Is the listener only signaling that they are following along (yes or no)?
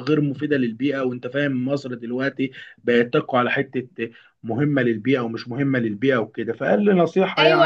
no